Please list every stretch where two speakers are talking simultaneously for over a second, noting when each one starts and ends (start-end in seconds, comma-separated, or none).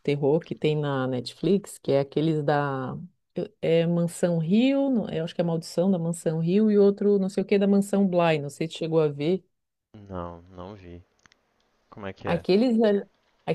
none